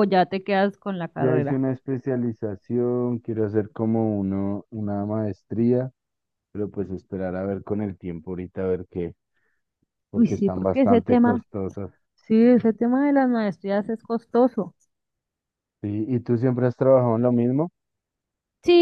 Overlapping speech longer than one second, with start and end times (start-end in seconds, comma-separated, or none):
10.1-11.4